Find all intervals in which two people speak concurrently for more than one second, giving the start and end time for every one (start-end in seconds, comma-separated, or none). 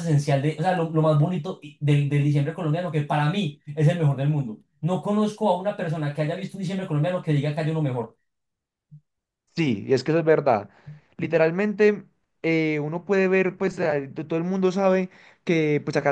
none